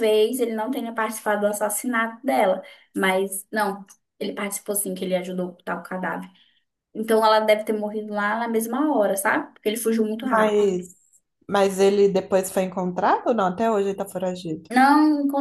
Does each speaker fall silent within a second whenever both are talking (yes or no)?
yes